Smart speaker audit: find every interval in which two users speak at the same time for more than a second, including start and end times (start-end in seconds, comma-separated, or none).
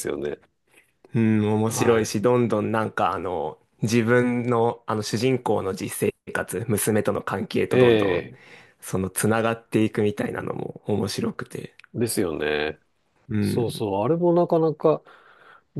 none